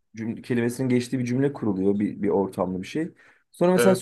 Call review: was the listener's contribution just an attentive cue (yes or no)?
yes